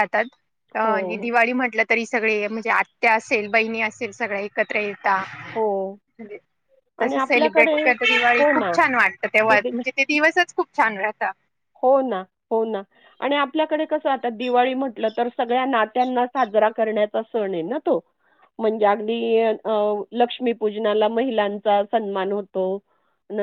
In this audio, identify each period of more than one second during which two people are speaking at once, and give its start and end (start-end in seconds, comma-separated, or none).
none